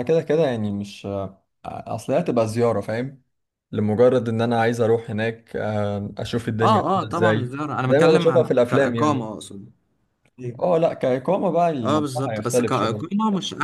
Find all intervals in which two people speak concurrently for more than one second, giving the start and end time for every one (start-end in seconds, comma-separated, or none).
6.6-9.2, 11.8-13.1